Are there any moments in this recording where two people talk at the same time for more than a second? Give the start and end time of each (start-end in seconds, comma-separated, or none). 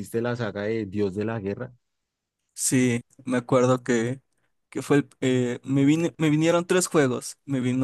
none